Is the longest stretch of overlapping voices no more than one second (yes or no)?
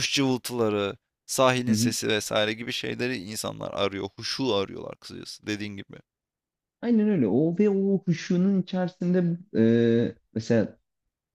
yes